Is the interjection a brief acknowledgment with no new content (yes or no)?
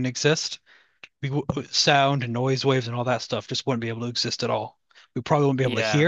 yes